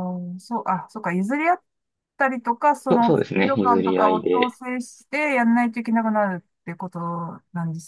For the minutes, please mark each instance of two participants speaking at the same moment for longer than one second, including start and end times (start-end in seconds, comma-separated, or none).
2.9-4.6